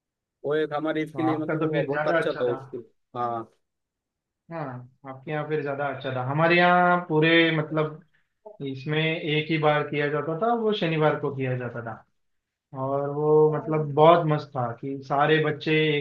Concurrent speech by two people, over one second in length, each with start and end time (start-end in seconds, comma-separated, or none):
1.1-2.6